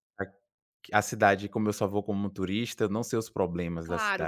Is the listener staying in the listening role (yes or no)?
no